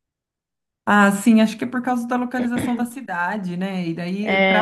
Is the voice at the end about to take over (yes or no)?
no